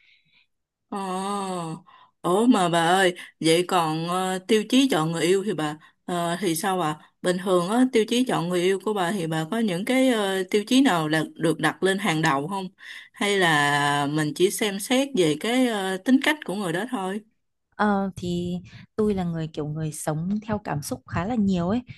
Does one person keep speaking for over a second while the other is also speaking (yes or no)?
no